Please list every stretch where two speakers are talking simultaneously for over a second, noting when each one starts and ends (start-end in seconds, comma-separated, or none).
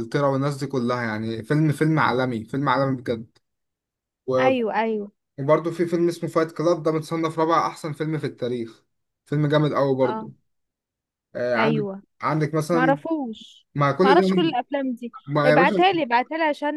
none